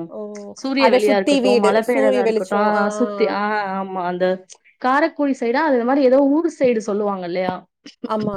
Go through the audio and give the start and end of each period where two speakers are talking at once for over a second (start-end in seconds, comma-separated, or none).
0.8-2.8